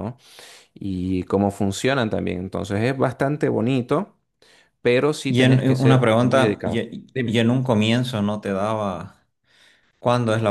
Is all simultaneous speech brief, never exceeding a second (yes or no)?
no